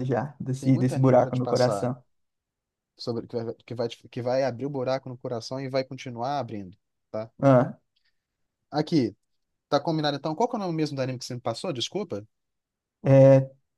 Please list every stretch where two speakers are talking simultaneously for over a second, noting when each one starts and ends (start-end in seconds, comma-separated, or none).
0.6-1.9